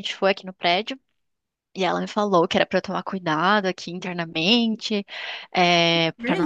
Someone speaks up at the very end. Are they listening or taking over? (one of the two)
listening